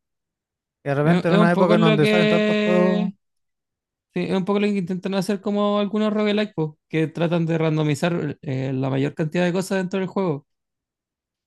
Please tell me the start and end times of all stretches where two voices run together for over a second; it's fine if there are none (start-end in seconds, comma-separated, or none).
1.0-3.1